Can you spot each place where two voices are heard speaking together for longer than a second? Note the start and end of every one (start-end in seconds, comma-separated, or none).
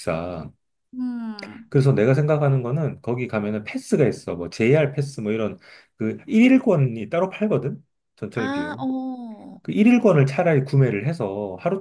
none